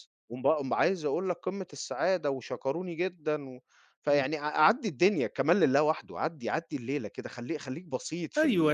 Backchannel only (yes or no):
no